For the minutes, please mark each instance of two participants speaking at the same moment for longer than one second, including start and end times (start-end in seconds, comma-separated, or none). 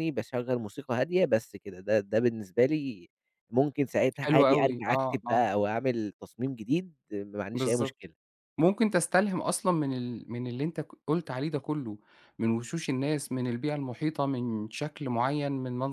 4.2-5.5